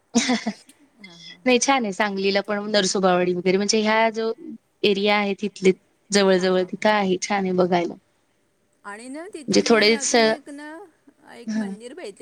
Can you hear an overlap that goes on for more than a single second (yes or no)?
no